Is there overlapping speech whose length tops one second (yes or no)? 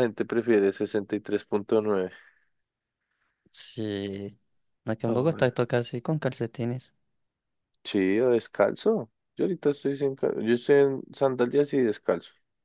no